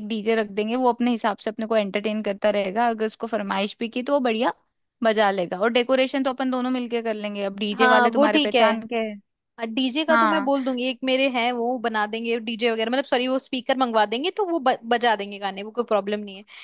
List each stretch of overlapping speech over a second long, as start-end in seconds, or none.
7.7-9.0